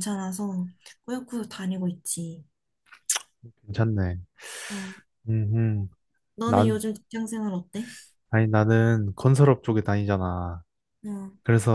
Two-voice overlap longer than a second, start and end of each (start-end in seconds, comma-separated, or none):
none